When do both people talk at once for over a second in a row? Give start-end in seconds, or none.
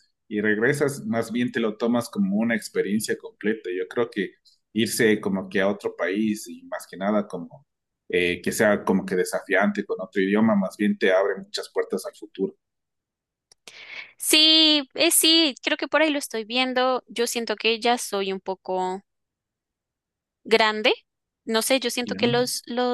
none